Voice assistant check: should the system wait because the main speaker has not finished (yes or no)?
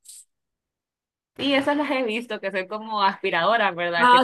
no